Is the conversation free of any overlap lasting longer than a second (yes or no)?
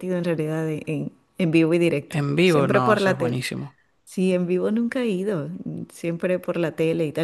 no